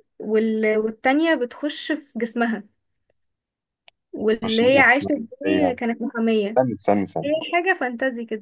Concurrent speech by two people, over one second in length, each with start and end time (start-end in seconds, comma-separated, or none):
4.4-5.8